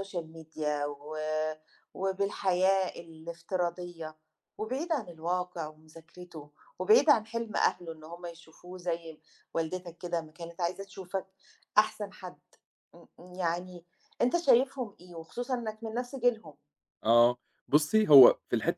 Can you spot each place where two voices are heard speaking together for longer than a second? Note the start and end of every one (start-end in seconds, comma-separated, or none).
none